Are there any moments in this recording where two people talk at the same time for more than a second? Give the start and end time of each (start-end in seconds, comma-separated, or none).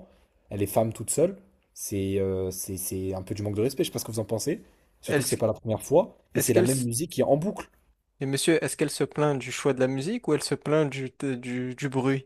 none